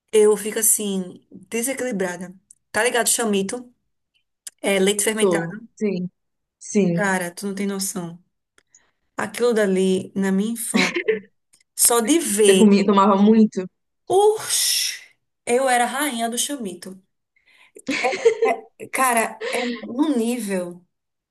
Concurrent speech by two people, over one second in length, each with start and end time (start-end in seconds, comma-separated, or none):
none